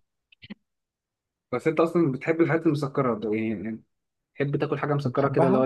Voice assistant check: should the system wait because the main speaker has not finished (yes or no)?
no